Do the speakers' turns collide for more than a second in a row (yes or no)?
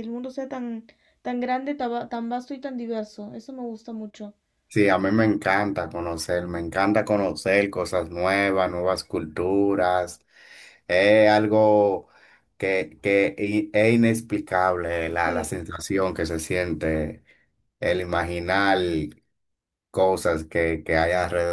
no